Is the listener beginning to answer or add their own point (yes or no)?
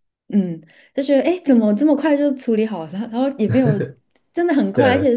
no